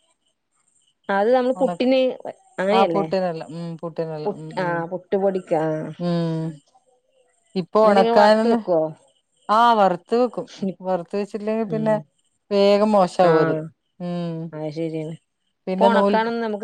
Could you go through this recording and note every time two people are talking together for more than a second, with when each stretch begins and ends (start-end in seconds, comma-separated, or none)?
none